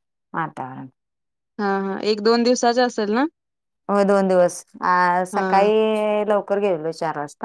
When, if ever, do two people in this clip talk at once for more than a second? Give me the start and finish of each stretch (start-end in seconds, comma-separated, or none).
none